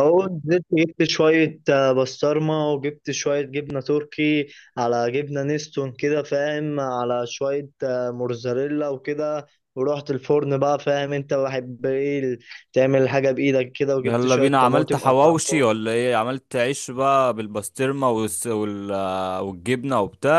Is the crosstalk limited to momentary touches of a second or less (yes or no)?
no